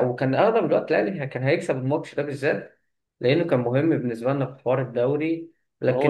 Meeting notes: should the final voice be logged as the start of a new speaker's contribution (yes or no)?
yes